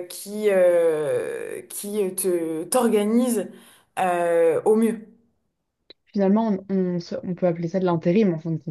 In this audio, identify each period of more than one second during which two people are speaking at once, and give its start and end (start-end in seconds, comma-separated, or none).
none